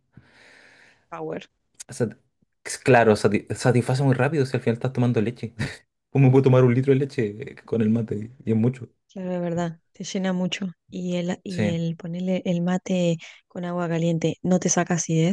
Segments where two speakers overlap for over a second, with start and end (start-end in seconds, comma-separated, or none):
none